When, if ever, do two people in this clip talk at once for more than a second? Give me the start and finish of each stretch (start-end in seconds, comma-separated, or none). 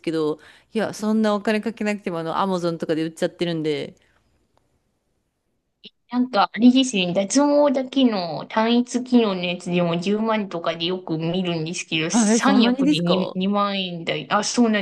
12.1-13.4